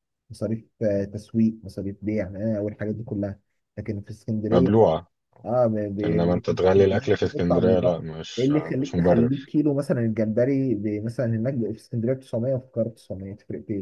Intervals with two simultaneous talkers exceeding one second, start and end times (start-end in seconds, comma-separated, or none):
6.0-9.5